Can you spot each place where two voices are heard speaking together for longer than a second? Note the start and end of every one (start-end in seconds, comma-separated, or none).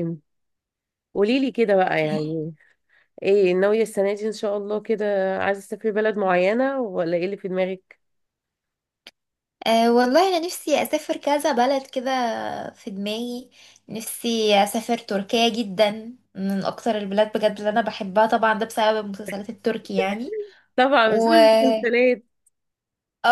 none